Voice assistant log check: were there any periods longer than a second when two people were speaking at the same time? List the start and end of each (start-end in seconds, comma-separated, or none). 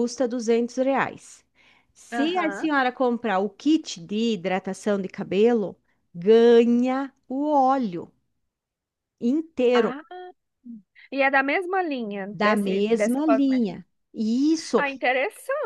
12.3-13.8